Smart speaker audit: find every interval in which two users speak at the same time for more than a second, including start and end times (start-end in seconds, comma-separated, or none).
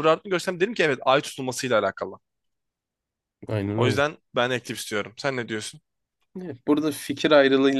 none